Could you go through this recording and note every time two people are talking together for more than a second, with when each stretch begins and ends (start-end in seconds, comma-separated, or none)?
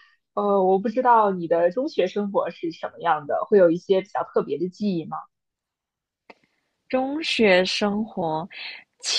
none